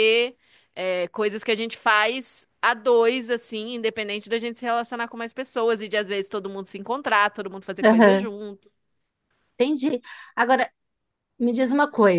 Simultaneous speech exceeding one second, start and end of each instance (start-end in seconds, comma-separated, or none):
none